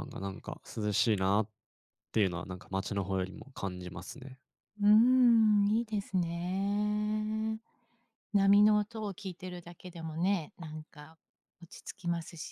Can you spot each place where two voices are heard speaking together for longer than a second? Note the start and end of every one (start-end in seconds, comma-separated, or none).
none